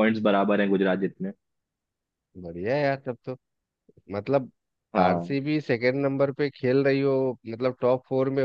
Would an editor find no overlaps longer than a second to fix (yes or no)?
yes